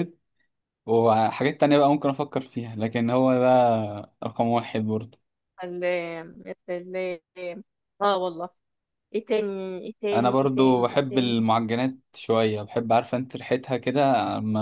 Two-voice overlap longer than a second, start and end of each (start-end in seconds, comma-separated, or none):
10.1-11.5